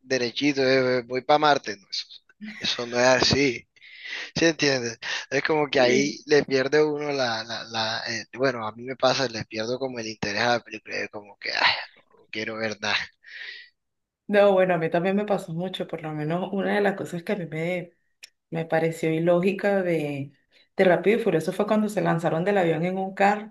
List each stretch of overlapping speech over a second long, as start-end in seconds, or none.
none